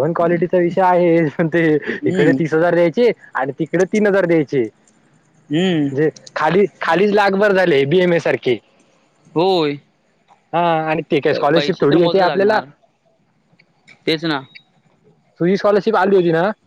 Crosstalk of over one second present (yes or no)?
yes